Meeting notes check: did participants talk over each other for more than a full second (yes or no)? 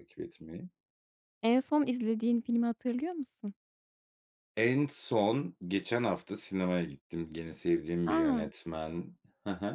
no